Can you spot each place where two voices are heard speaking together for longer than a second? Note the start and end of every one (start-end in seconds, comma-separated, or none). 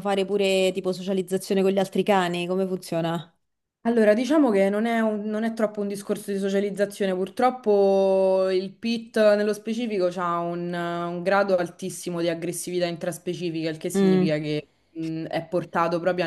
none